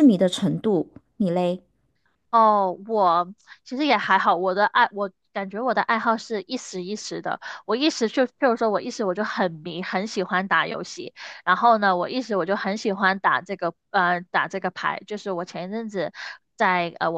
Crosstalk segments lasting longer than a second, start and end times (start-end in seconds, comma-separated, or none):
none